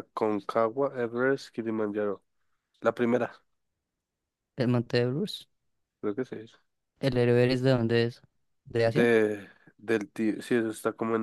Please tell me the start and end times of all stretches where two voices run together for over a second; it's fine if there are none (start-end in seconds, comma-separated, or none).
none